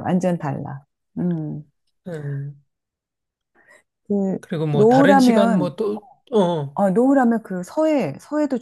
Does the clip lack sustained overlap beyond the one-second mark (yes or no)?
no